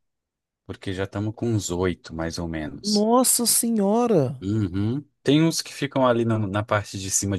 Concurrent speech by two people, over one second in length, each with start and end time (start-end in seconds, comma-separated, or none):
none